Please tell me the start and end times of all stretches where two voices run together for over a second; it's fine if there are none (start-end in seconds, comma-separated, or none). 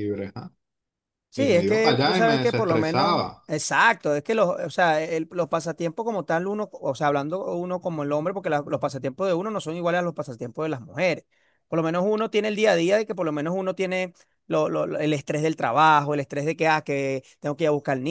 1.3-3.4